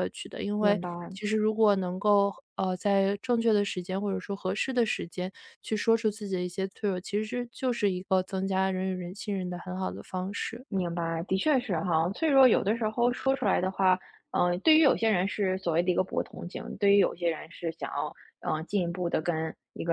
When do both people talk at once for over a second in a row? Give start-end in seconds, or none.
none